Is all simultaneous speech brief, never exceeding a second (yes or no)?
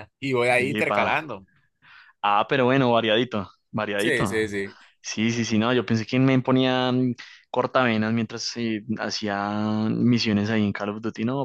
yes